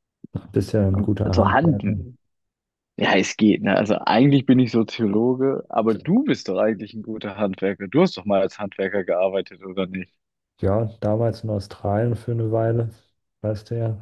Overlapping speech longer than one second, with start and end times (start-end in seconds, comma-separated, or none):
none